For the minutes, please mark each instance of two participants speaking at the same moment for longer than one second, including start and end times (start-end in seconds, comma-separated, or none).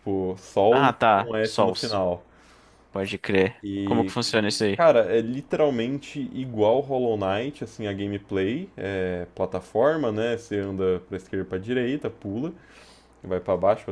0.7-2.0